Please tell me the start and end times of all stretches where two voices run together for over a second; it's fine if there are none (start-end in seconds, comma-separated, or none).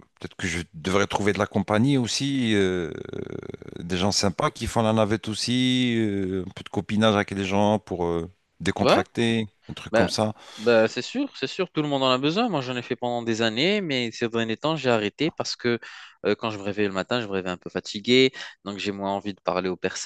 none